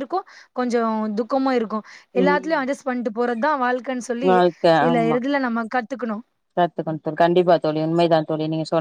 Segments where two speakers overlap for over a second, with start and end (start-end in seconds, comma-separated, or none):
none